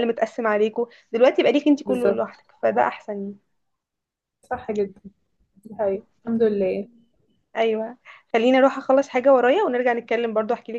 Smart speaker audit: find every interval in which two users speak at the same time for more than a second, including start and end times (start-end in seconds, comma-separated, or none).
none